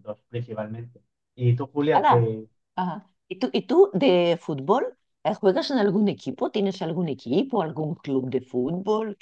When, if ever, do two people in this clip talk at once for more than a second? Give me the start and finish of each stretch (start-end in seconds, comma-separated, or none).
none